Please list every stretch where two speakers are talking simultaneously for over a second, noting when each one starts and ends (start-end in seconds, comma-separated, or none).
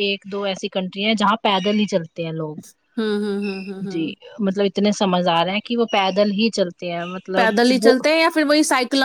none